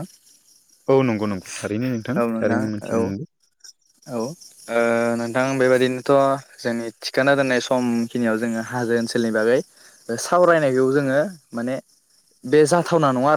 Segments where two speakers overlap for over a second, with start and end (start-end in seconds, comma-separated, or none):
none